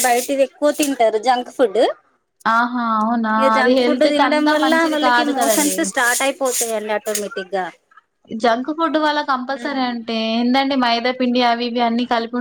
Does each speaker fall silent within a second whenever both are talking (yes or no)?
no